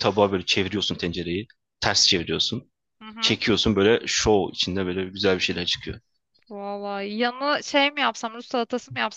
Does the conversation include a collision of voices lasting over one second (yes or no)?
no